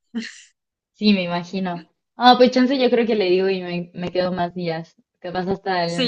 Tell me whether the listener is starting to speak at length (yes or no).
yes